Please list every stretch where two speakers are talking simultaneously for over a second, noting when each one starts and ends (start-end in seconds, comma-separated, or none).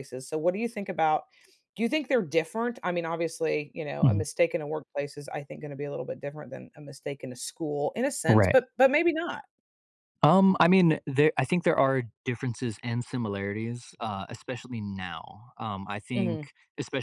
none